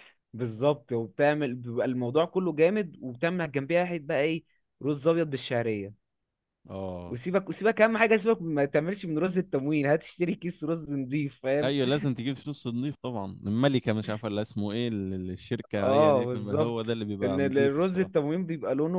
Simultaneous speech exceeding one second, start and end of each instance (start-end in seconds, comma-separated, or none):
15.8-18.1